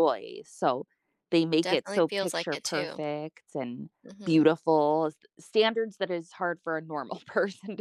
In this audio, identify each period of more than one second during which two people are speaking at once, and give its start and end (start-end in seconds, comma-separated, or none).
1.6-3.0